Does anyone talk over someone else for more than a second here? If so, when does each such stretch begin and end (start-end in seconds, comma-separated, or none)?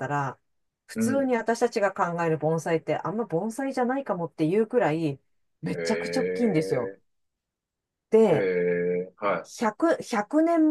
5.7-6.9